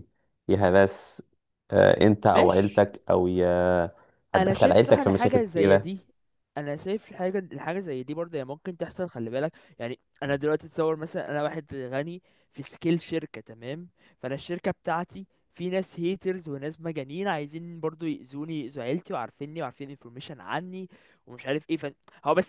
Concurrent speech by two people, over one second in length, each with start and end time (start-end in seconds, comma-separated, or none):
4.3-5.9